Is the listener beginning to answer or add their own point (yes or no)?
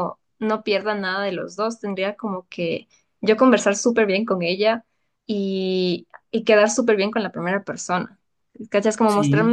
no